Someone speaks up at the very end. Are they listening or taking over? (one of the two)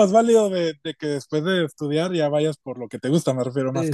taking over